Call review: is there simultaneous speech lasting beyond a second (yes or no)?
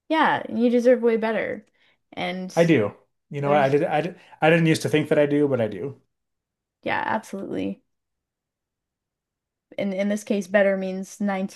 no